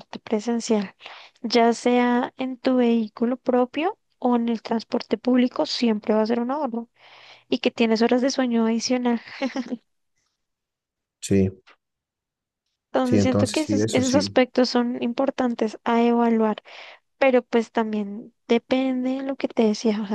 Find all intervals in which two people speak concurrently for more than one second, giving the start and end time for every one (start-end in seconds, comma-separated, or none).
13.0-14.4